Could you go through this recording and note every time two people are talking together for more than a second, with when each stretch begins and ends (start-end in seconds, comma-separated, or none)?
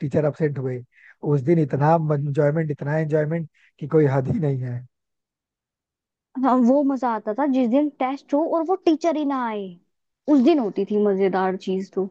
none